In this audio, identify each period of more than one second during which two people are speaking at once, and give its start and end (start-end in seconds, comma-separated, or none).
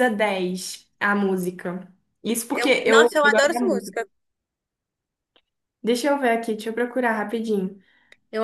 2.5-4.0